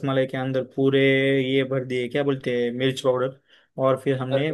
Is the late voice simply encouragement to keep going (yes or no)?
yes